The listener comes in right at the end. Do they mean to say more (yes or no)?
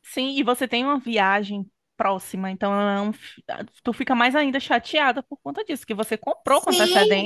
yes